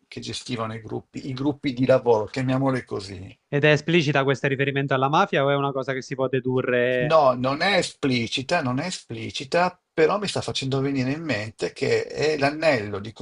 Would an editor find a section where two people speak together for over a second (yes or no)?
no